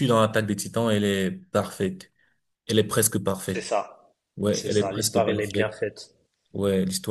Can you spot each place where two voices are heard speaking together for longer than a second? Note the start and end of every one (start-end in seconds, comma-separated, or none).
4.5-5.8